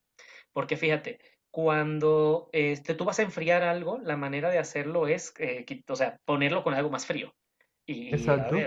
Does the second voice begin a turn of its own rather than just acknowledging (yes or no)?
no